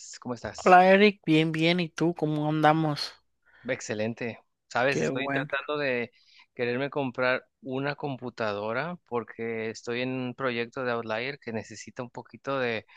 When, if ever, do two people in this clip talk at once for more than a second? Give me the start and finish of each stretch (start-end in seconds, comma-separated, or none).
none